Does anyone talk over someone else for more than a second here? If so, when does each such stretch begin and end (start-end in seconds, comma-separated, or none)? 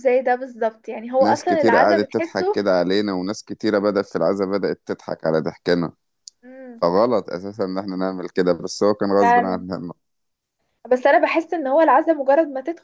1.2-2.5